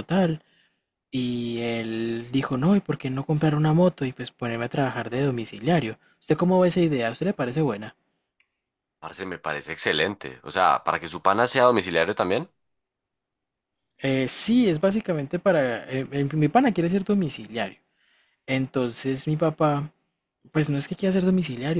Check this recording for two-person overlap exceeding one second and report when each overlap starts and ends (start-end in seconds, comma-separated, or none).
none